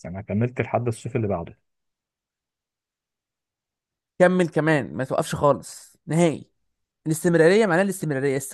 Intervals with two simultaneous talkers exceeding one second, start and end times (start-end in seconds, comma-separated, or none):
none